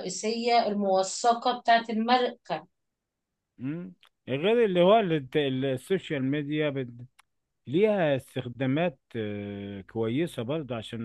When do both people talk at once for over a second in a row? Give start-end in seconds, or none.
none